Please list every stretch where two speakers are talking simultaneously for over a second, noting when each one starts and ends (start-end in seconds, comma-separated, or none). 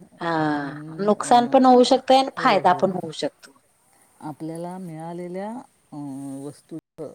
none